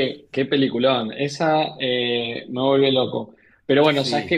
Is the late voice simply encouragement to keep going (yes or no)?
yes